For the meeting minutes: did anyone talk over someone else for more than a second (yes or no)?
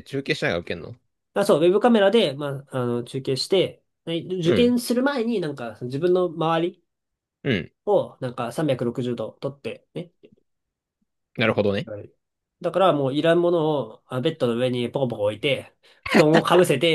no